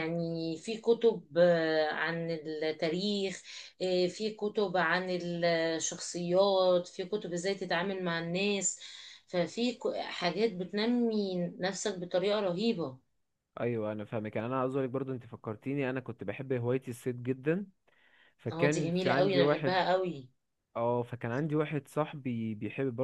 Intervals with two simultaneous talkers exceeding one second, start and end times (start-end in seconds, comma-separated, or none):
18.5-19.9